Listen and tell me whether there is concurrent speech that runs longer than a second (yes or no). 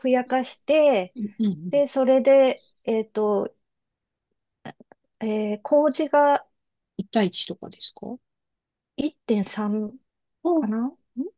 no